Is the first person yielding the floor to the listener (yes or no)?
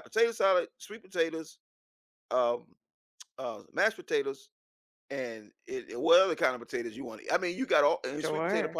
no